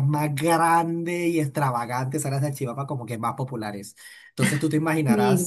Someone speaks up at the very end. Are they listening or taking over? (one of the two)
listening